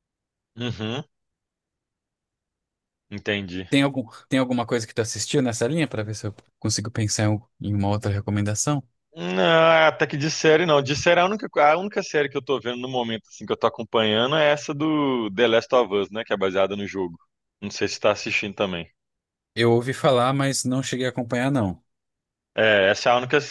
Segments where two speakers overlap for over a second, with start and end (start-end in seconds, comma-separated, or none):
none